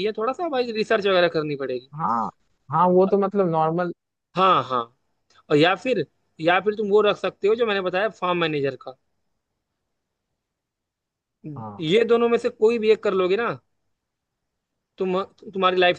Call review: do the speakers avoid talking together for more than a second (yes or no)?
yes